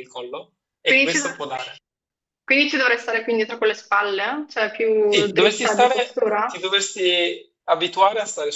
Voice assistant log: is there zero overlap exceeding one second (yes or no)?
no